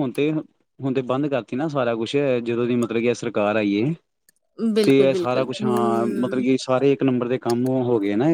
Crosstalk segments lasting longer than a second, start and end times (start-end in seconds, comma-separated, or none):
4.8-6.4